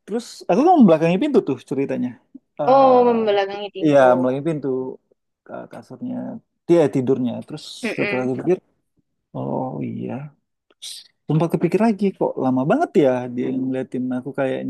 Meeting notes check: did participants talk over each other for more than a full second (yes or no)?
yes